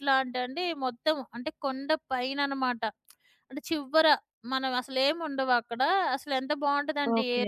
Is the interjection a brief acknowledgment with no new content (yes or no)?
yes